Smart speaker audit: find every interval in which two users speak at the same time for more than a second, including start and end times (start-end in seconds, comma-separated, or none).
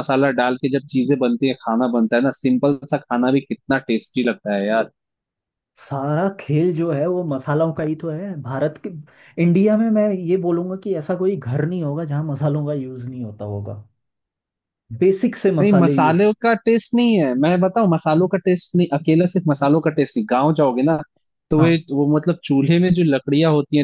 none